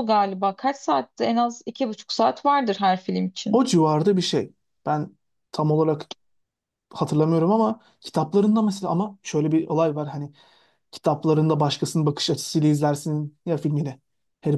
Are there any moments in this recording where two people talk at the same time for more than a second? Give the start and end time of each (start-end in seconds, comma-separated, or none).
none